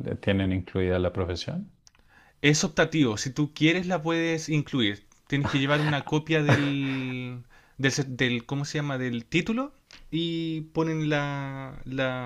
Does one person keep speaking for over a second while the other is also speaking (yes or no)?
no